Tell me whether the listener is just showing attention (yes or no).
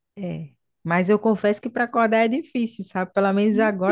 yes